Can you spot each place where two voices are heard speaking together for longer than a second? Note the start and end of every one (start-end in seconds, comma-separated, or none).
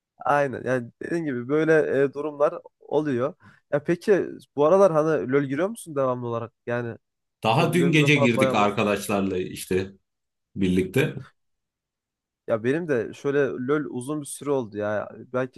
7.6-9.0